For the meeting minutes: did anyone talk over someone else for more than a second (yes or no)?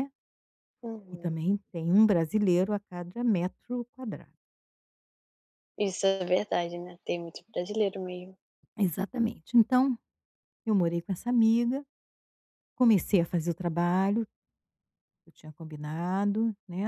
no